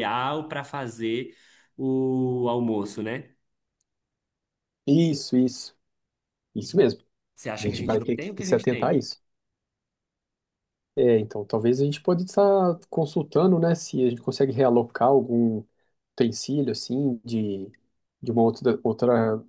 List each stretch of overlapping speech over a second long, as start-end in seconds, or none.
7.6-9.0